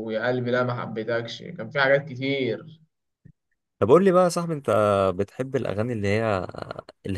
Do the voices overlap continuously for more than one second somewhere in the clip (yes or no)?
no